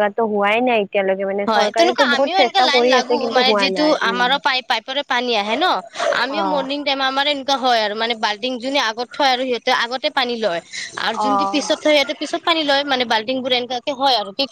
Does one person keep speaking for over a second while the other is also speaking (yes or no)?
yes